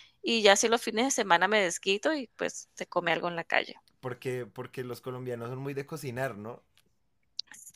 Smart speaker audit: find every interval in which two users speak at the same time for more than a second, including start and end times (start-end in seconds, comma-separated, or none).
none